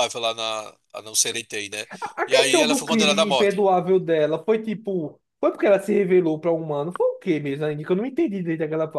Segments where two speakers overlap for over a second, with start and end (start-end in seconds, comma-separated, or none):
2.2-3.6